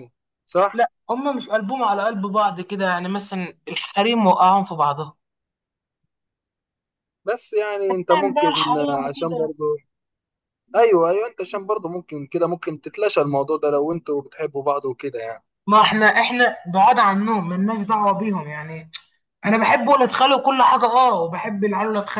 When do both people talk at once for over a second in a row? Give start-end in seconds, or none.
8.1-9.5